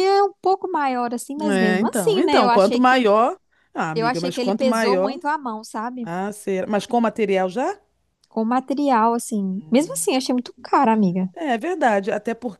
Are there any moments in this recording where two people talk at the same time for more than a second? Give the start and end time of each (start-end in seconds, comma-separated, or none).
1.4-3.0, 3.9-5.2